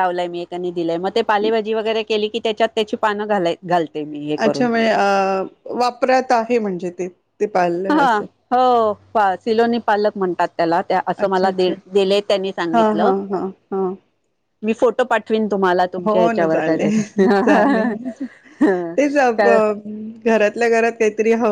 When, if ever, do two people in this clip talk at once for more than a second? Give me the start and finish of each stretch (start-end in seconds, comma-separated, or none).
16.1-17.9